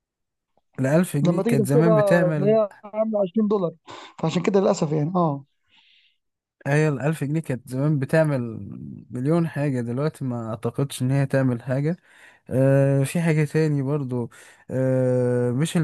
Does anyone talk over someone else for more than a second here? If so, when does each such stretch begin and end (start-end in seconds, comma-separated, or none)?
1.3-2.6